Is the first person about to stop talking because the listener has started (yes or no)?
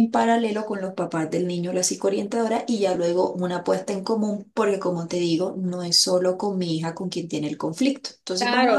yes